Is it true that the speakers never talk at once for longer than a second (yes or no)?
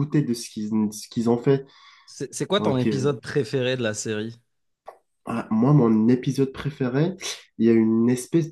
yes